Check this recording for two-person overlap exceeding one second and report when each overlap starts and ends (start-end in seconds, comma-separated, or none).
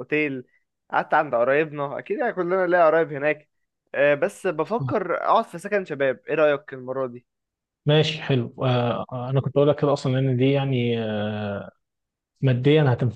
none